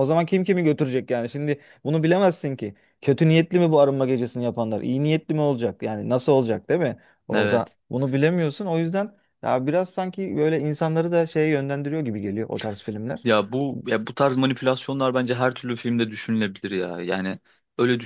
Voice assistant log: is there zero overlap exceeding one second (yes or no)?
yes